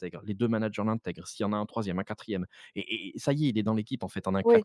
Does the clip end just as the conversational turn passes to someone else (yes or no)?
yes